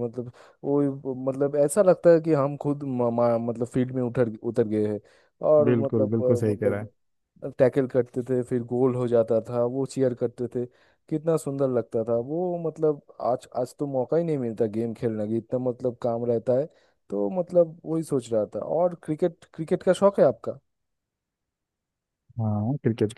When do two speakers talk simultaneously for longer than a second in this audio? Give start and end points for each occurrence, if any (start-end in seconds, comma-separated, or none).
5.6-6.9